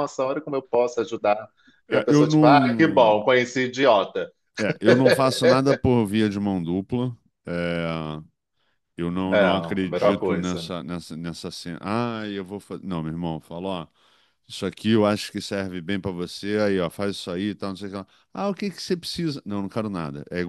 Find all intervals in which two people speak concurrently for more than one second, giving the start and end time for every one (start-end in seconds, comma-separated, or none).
1.9-3.2, 9.3-10.7